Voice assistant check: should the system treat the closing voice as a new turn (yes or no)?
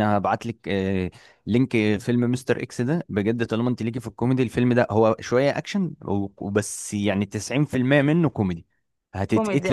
yes